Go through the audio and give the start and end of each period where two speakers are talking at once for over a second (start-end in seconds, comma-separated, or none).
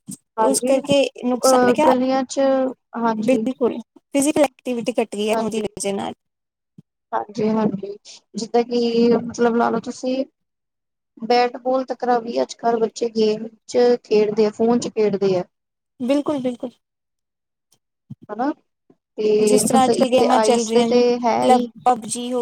none